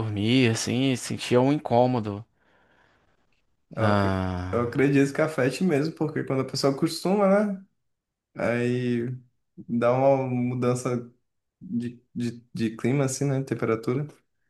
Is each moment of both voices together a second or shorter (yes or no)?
yes